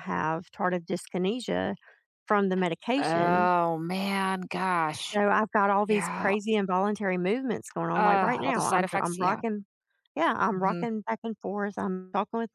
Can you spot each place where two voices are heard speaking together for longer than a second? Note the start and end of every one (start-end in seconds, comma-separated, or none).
7.9-9.4